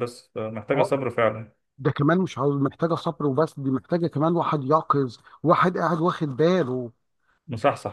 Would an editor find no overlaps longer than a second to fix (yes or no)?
yes